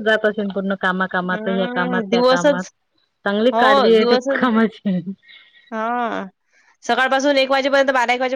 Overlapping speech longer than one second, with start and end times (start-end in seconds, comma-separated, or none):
1.3-2.6